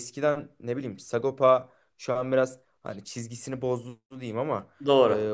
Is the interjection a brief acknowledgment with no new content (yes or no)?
yes